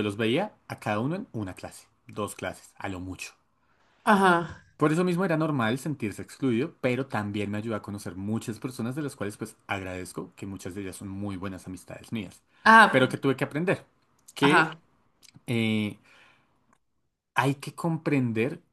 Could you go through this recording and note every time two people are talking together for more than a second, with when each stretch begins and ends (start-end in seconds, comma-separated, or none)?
none